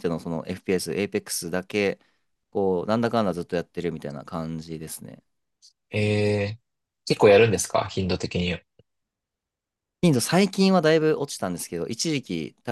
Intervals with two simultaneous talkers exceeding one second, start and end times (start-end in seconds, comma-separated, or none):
none